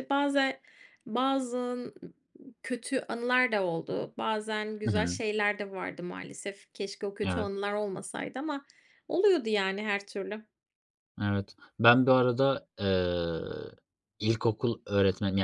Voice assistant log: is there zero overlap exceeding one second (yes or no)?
yes